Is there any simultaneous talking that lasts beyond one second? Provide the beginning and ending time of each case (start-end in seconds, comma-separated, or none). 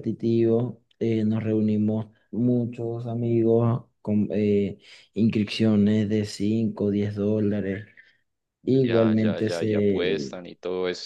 8.9-10.3